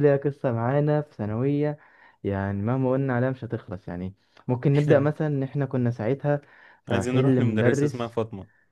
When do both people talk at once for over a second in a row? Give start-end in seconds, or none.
6.9-8.2